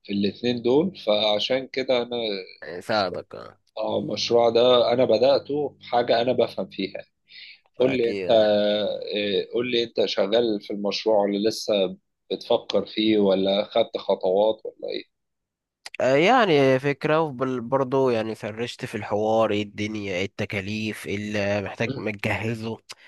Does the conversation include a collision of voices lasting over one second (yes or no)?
no